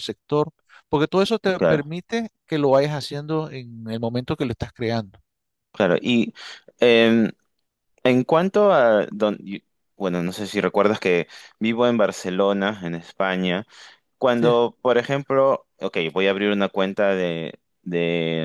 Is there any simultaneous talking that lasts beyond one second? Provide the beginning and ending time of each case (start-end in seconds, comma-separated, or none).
none